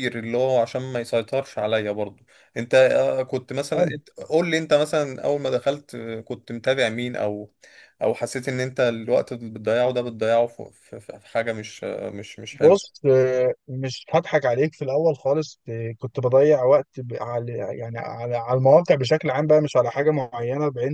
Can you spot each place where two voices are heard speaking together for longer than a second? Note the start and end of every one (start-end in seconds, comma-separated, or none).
none